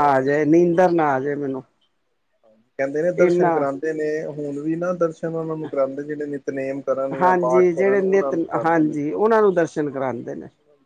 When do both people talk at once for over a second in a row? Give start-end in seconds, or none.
7.2-8.9